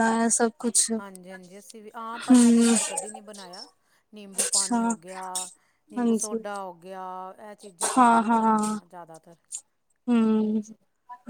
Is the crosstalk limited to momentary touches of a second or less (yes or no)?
yes